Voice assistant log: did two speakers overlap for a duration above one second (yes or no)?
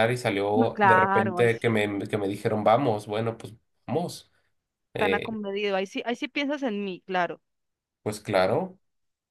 yes